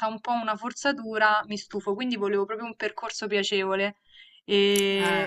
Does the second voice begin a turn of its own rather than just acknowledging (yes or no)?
no